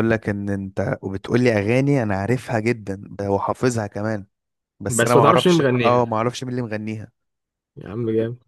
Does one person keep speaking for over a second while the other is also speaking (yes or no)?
yes